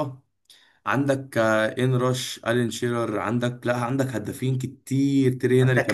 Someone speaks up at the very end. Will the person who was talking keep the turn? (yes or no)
no